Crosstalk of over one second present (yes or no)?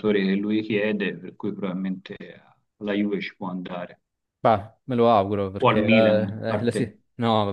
yes